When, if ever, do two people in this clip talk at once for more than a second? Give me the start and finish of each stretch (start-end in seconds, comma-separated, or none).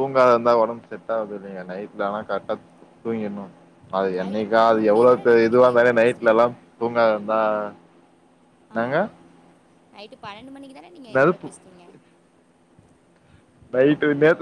4.2-6.4